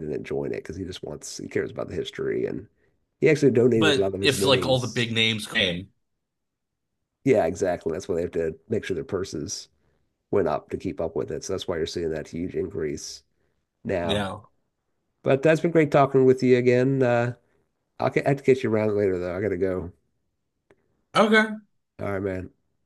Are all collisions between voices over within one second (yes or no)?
no